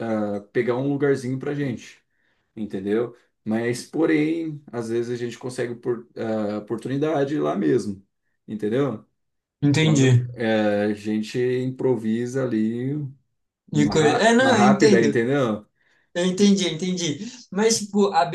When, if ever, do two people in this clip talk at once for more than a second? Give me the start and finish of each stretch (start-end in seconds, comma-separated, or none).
13.7-15.2